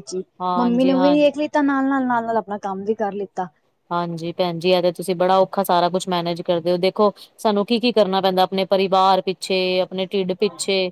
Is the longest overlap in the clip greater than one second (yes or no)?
no